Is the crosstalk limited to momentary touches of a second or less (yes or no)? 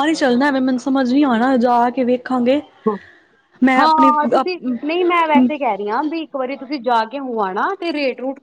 yes